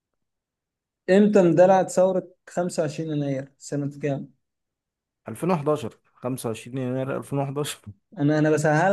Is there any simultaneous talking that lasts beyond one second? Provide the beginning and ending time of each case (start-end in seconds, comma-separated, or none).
none